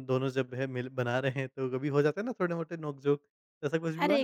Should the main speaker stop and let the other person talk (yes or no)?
yes